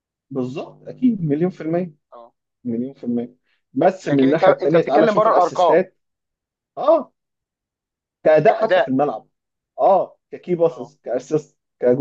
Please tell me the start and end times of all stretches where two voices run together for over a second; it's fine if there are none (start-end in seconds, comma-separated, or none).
4.0-5.8